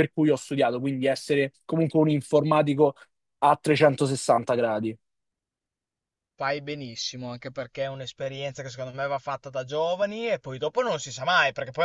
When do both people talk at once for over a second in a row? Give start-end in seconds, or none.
none